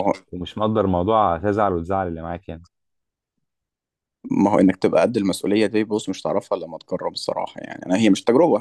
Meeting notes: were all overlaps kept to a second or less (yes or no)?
yes